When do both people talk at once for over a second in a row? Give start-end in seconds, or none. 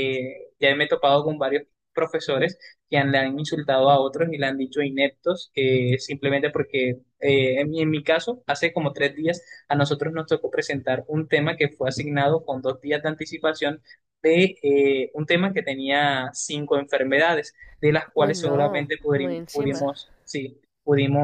18.2-19.9